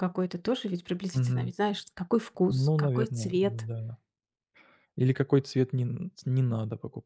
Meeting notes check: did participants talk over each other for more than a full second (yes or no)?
yes